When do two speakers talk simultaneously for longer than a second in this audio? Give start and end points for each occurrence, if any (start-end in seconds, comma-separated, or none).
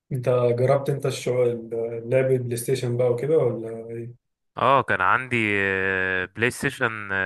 none